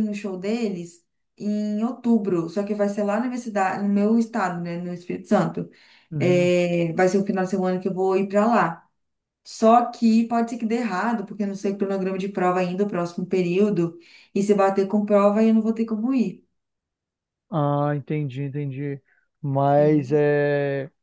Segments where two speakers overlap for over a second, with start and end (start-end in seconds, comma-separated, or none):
none